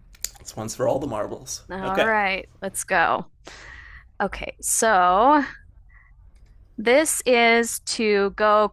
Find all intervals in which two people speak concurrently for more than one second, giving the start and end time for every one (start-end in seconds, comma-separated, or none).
none